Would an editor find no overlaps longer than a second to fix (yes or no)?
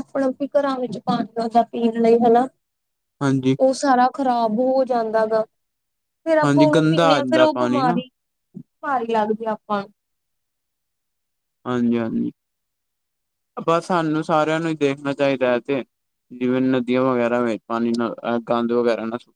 no